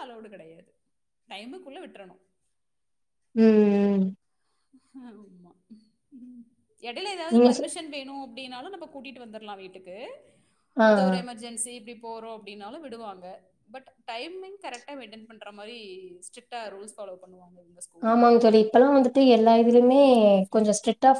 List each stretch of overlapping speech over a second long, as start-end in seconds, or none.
none